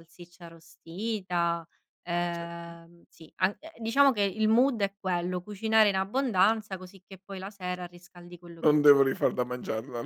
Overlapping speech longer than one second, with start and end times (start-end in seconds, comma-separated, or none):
none